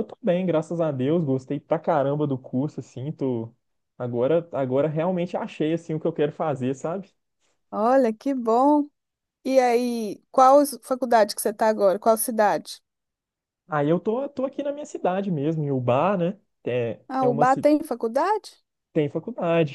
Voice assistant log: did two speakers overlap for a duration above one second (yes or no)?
no